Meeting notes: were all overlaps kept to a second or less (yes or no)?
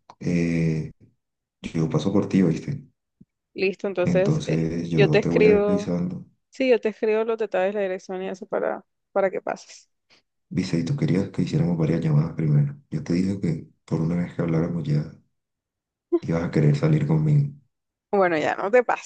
no